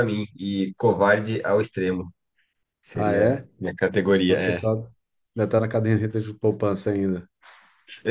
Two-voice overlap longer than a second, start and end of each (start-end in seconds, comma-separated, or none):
none